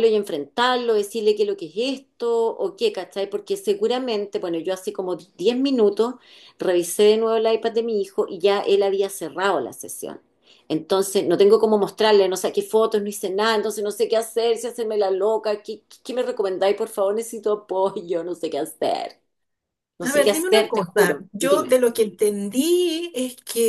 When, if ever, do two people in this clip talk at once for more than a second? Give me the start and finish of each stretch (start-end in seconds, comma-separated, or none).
20.0-21.8